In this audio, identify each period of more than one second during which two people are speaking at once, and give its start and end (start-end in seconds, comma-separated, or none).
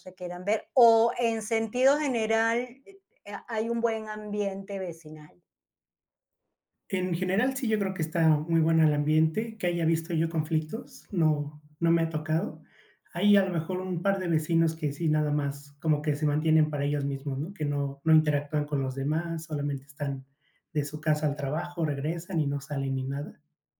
none